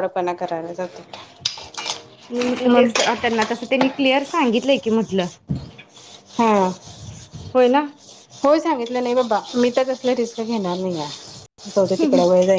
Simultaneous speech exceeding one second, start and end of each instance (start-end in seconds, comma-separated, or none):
none